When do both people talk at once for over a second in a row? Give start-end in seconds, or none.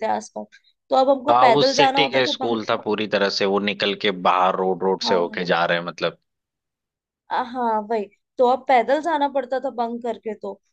1.3-2.8